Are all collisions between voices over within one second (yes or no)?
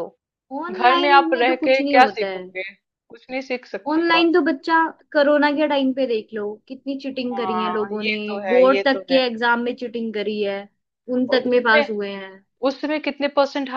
no